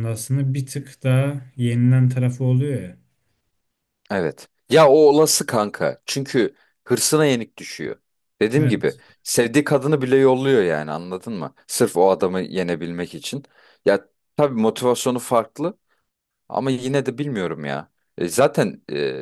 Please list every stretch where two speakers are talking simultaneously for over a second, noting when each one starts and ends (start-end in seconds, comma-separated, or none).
none